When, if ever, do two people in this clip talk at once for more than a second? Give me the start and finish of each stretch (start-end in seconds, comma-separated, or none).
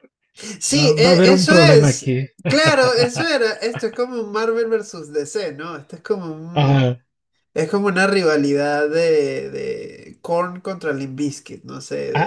0.7-2.3